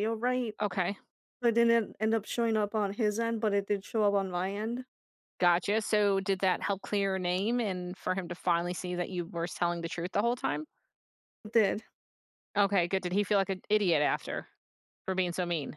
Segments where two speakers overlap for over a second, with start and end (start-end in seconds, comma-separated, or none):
none